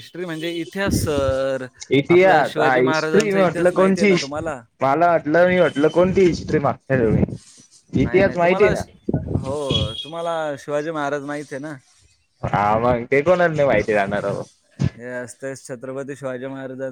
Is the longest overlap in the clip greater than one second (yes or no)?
yes